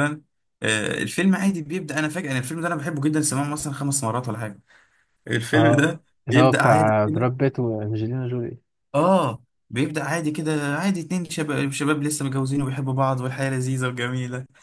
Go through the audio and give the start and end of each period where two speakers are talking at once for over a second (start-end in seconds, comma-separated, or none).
5.5-7.3